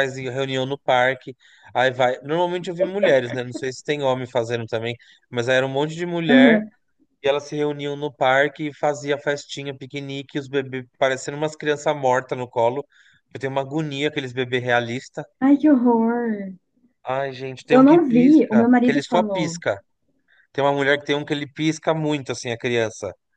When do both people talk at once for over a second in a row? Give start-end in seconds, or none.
17.7-19.6